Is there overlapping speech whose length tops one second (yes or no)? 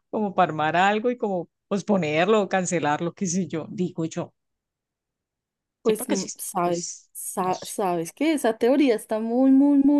yes